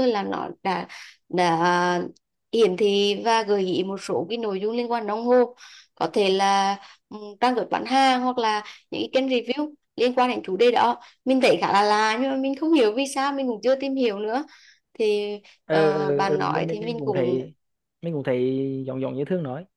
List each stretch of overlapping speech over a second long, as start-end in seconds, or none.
15.7-17.4